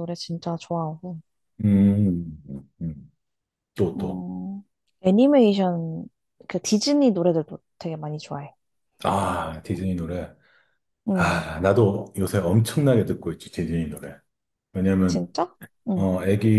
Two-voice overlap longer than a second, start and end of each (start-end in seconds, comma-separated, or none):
none